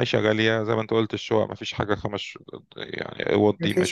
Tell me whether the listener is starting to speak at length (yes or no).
yes